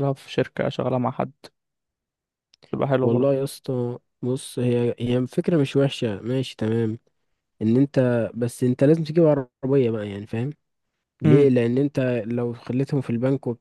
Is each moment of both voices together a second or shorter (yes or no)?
yes